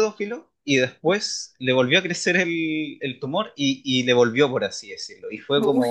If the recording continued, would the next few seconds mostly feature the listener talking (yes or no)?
no